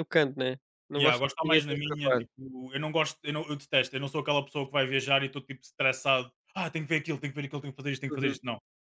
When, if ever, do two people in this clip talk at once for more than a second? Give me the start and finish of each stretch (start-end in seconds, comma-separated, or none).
1.0-2.2